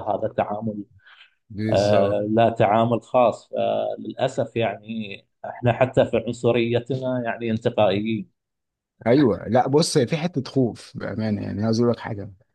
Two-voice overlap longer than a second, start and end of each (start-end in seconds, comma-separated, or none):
none